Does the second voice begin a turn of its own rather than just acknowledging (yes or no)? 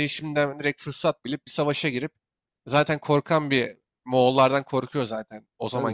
no